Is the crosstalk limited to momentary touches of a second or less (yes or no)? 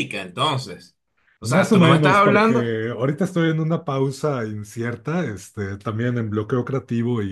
no